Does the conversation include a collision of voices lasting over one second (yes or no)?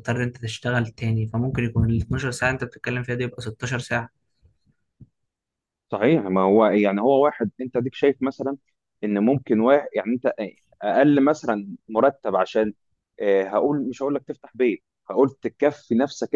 no